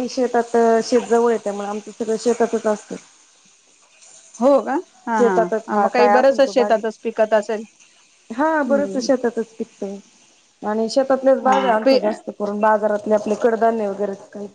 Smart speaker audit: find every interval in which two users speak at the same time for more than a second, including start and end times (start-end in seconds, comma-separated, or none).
5.2-6.8